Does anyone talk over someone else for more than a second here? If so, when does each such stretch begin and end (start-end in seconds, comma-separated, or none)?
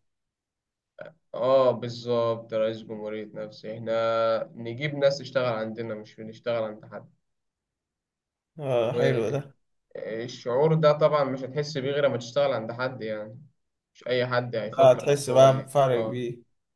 14.8-16.2